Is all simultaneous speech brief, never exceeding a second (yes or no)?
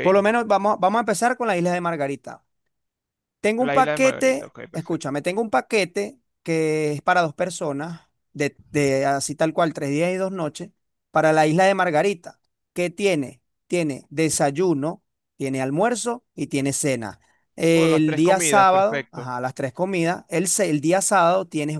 no